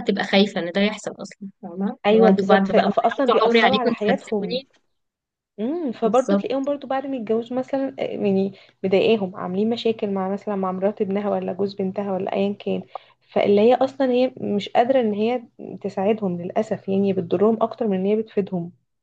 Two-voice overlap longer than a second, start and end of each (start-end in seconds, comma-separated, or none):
2.1-4.6